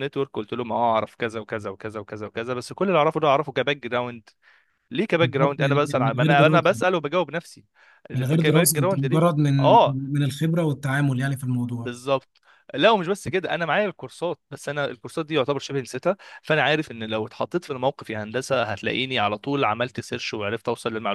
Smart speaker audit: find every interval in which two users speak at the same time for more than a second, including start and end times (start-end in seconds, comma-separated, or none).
5.2-6.8, 8.1-9.7